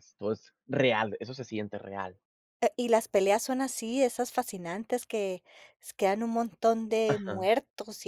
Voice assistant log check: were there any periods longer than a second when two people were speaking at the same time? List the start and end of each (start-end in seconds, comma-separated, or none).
none